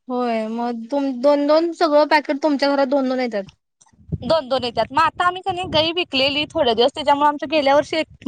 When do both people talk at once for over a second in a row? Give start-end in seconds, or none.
none